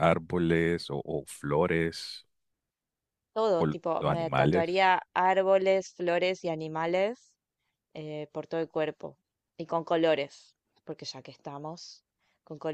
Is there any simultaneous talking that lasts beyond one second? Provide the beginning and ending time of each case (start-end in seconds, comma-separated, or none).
3.6-4.8